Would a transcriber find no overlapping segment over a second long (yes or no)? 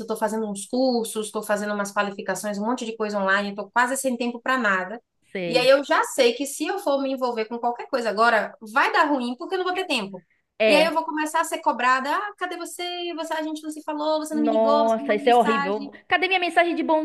no